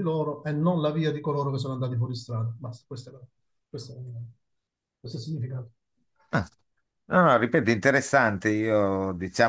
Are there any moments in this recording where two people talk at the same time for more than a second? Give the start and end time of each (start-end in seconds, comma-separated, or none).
none